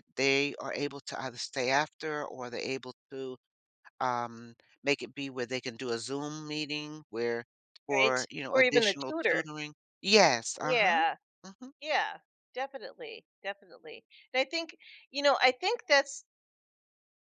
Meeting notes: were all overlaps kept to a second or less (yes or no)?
no